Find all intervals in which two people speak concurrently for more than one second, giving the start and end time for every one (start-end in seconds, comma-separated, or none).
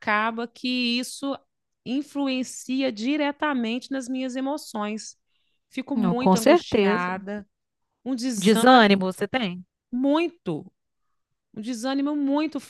5.9-7.1